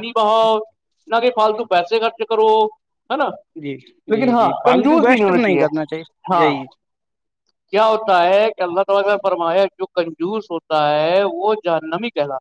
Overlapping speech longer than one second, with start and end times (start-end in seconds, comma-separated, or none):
4.1-5.7